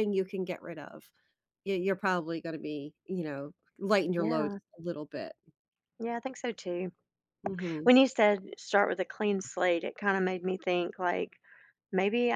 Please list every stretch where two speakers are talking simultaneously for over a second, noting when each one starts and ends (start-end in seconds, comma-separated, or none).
none